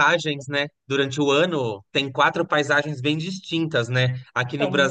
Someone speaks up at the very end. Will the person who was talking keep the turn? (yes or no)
yes